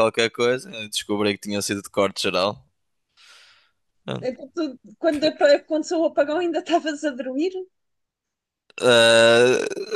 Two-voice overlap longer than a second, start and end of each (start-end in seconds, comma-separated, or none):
none